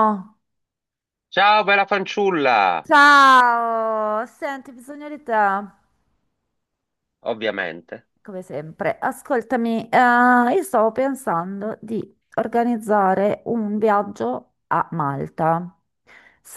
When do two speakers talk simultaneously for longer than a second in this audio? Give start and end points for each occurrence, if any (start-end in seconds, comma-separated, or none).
none